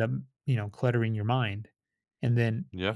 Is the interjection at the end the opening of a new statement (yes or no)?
no